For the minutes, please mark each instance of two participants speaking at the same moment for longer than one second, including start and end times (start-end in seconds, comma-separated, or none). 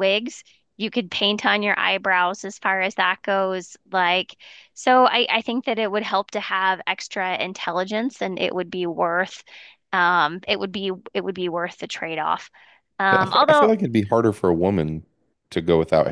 none